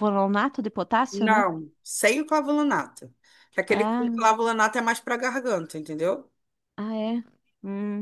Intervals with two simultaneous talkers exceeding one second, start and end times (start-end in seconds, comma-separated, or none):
none